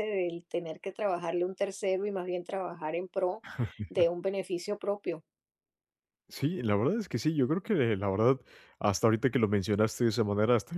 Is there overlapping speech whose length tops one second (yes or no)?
no